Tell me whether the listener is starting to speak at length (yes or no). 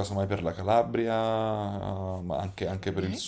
yes